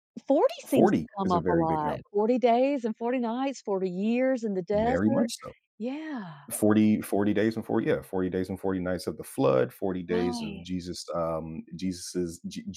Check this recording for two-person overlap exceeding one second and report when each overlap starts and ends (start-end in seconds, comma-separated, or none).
0.7-2.0